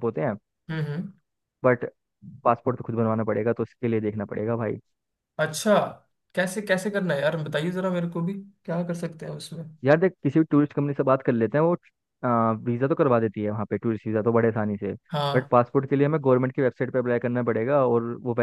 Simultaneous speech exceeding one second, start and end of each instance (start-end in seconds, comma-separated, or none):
none